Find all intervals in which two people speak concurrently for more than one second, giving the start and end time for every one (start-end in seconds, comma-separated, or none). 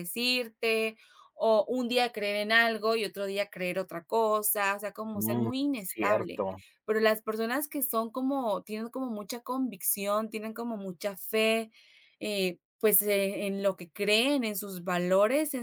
5.1-6.4